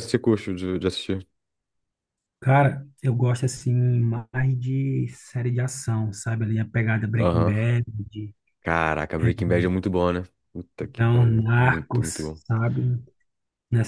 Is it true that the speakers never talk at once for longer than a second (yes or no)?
no